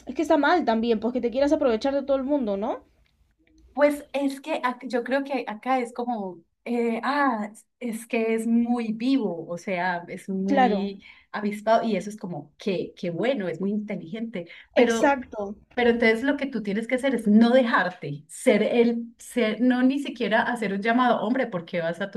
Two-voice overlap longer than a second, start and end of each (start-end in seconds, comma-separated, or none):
none